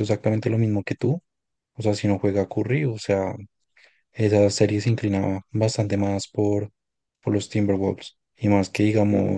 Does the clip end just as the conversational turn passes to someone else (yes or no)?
no